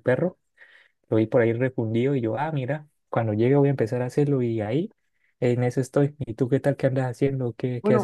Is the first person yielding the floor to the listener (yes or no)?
yes